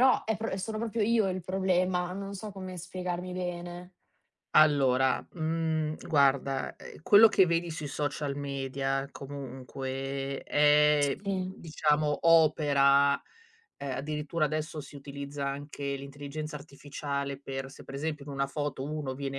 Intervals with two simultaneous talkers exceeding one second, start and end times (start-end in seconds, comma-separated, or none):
none